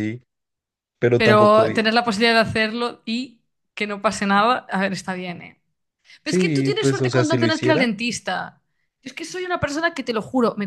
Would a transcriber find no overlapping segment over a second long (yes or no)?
no